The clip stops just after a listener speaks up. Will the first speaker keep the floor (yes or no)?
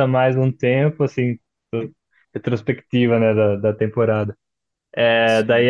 yes